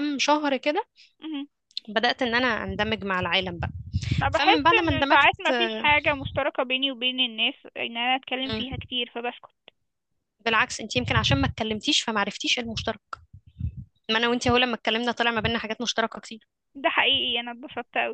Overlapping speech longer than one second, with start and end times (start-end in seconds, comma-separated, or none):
4.3-5.9